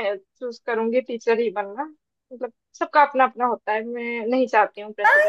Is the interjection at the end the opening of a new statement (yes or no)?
yes